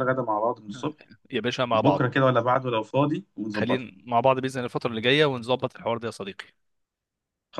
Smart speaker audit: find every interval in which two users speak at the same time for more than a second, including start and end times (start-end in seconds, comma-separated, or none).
none